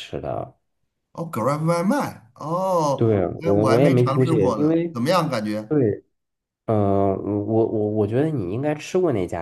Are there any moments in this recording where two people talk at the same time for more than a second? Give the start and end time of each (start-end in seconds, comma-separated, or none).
3.0-4.9